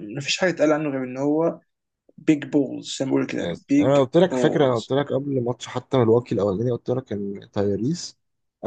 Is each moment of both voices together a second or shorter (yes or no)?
no